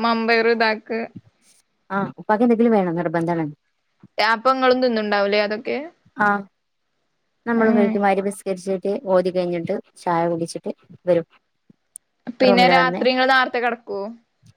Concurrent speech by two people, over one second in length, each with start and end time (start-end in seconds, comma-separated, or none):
none